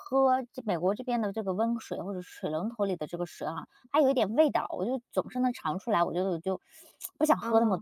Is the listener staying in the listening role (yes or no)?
yes